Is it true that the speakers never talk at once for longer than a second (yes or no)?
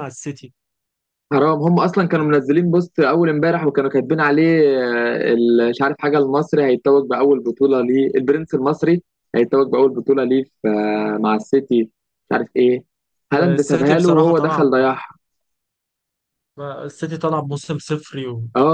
no